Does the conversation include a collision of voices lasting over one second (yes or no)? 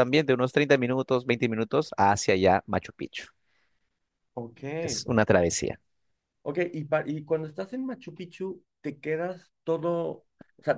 no